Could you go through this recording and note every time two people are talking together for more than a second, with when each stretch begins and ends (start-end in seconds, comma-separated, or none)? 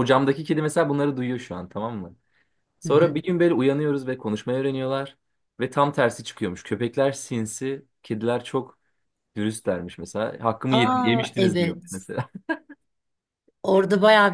10.7-12.0